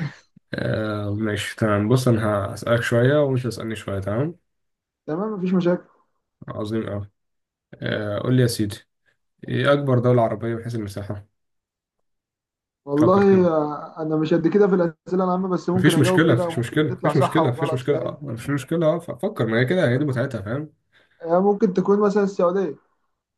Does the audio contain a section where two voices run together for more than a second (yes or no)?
yes